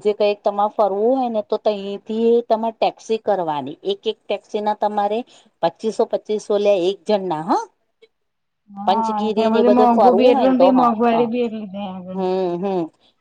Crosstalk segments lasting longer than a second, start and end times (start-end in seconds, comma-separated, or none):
8.8-11.3